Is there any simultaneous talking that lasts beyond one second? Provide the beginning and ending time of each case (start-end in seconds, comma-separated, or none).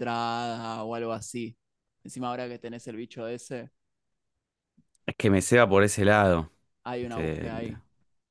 none